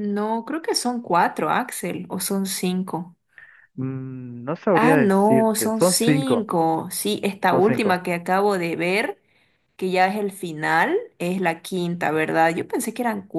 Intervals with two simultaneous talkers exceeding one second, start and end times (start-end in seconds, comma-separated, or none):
4.7-6.5